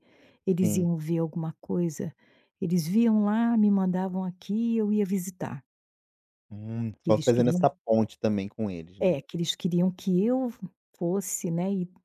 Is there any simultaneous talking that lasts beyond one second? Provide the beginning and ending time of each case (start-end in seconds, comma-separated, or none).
none